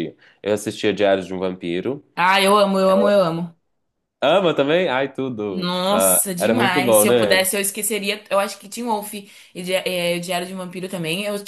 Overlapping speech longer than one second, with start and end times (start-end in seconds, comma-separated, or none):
5.5-7.5